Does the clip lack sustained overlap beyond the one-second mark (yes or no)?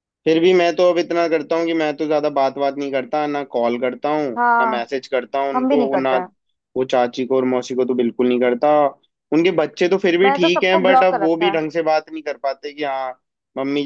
no